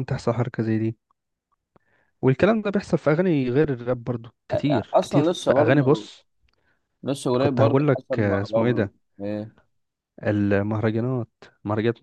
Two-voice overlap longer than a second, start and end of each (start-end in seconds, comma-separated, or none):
4.5-6.1, 7.4-8.9